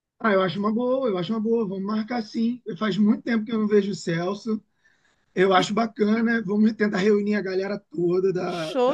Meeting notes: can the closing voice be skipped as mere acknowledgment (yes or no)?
no